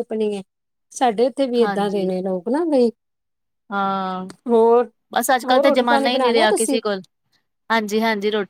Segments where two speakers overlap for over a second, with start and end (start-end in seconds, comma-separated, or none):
5.5-6.8